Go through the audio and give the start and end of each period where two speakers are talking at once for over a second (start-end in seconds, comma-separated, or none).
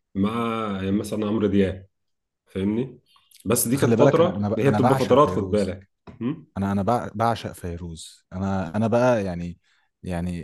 3.7-5.8